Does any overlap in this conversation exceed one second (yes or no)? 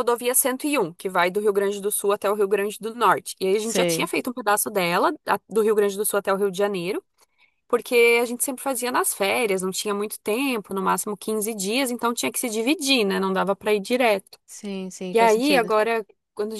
no